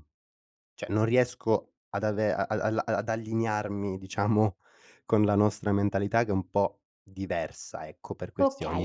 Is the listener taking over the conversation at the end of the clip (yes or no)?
yes